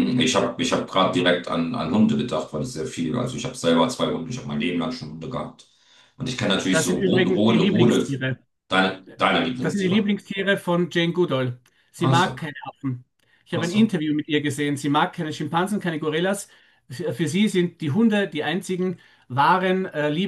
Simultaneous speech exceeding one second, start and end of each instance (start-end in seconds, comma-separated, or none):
6.7-8.1